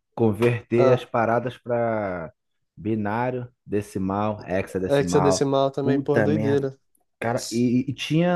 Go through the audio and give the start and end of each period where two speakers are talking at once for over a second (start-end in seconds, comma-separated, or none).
4.9-6.7